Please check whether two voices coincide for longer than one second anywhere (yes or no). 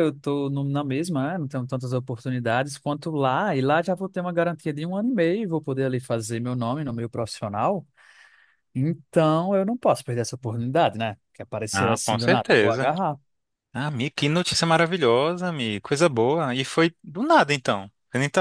yes